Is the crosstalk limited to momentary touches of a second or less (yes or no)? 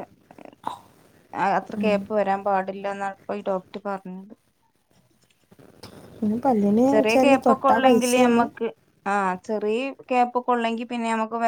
no